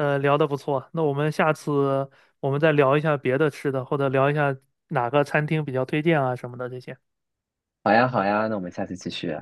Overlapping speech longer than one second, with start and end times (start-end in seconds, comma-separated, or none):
none